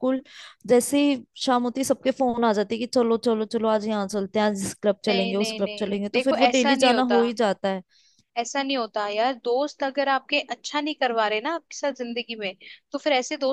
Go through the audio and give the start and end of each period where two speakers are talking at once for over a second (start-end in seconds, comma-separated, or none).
5.1-7.2